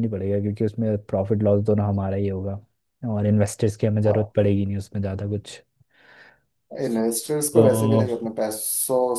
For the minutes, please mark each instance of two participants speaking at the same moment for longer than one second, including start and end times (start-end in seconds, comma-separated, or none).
none